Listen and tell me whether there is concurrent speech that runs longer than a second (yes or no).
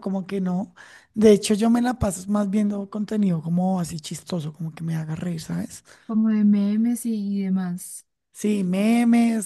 no